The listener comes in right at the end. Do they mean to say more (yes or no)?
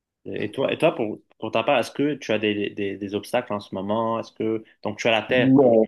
no